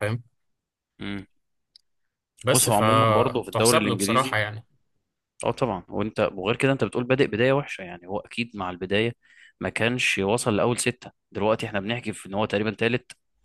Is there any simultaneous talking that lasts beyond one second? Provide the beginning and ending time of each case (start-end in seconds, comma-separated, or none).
2.5-4.4